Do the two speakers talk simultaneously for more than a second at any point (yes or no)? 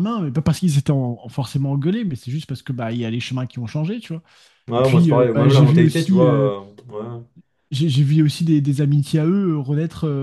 yes